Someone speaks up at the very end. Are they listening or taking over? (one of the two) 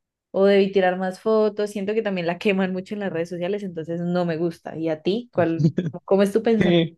taking over